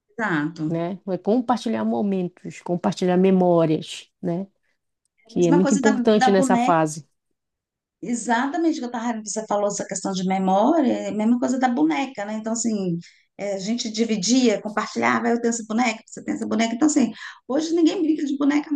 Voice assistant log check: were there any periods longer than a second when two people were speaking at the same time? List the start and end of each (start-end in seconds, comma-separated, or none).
5.2-6.8